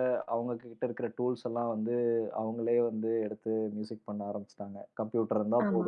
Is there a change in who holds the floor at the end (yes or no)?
no